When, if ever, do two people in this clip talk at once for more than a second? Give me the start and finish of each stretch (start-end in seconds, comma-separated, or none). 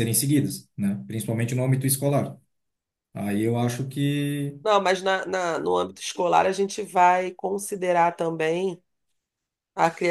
none